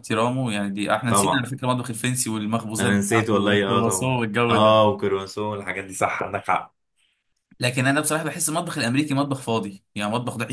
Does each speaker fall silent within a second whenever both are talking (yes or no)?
no